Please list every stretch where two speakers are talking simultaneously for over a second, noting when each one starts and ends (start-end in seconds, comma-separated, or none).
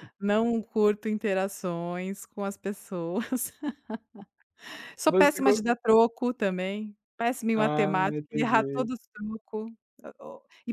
7.5-8.9